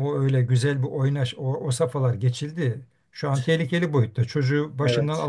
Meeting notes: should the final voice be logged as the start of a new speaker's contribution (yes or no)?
no